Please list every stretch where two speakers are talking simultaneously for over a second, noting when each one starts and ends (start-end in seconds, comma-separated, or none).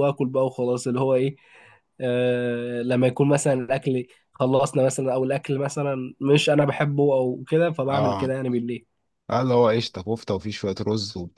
none